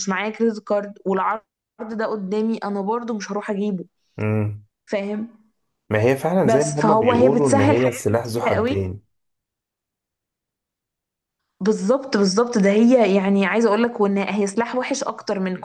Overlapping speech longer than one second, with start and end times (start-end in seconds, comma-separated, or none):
6.4-8.9